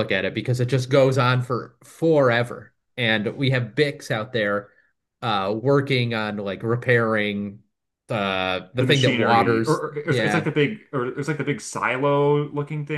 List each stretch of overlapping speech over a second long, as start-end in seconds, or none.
8.8-10.5